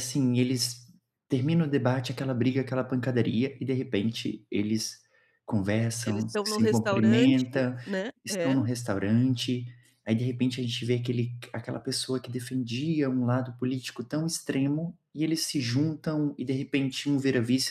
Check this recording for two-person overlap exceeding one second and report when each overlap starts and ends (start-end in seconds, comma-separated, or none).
6.0-7.4